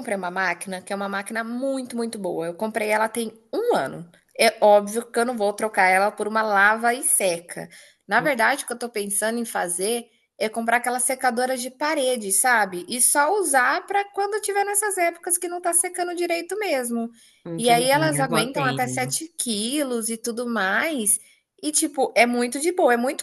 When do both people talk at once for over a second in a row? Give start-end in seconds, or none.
17.6-19.2